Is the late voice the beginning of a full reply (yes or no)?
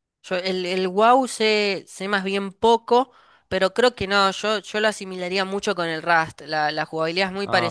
no